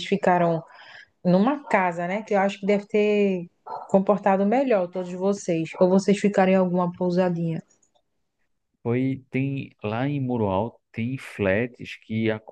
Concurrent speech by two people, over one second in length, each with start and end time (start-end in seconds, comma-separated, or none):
none